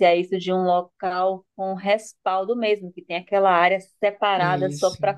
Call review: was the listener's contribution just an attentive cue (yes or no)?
yes